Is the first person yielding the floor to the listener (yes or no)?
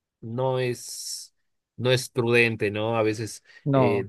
no